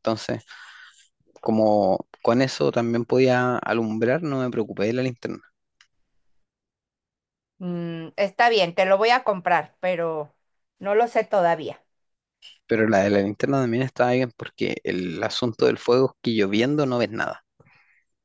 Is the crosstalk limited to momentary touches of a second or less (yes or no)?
yes